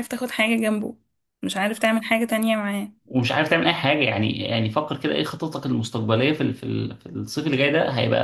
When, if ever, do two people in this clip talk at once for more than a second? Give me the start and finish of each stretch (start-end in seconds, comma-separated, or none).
none